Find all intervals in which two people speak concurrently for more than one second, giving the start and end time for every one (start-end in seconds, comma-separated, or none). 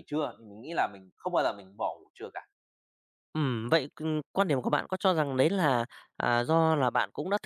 none